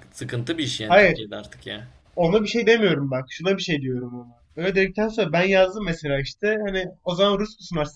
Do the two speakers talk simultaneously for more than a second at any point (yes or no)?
no